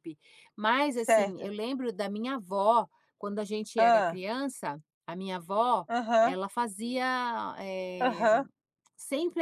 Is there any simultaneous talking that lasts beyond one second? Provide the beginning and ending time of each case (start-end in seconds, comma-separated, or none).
none